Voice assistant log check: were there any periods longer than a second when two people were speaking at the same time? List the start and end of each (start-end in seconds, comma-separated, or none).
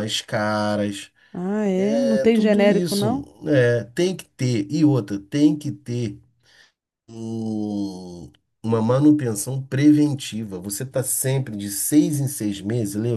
1.8-3.3